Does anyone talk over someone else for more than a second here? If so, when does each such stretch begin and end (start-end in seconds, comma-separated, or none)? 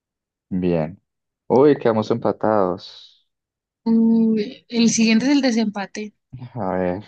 none